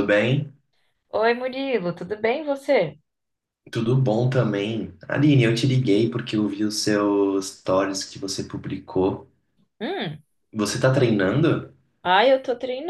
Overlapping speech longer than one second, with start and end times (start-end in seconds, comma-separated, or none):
none